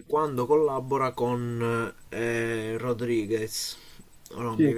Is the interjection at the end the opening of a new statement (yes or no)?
no